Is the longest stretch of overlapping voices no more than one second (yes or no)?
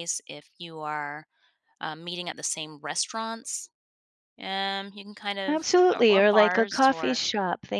no